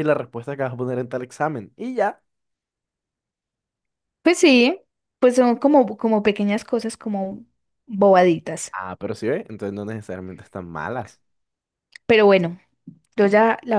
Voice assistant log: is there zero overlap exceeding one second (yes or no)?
yes